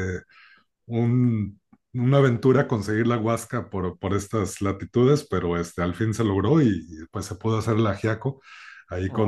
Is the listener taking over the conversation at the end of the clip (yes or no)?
no